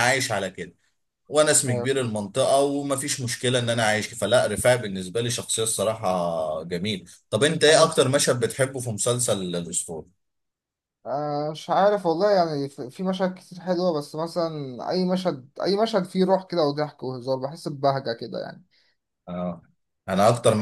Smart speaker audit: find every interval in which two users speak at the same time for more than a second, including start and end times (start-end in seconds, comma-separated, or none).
none